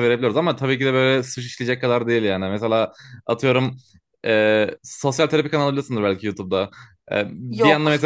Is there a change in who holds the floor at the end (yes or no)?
no